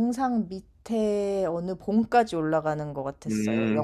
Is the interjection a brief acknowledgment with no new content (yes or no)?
no